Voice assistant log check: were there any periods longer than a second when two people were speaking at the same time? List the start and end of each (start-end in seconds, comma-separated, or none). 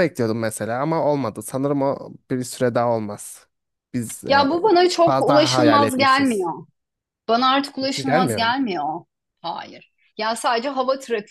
4.3-6.5